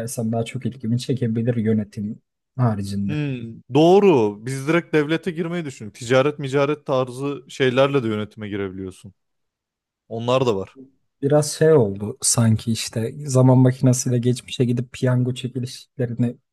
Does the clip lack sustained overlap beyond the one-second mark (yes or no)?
yes